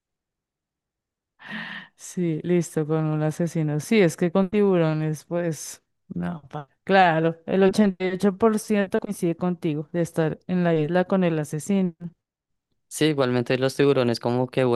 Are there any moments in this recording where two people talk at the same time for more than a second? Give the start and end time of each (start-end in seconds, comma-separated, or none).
none